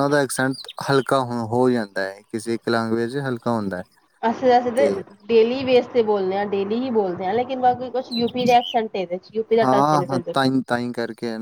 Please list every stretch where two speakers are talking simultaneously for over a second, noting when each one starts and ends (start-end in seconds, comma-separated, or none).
none